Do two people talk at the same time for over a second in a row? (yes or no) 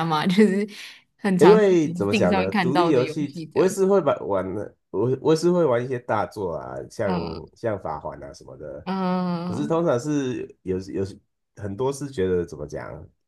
yes